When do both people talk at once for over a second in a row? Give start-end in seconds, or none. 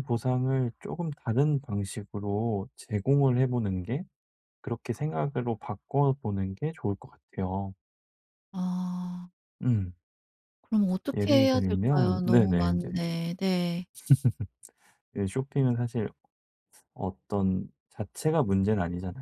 11.2-12.9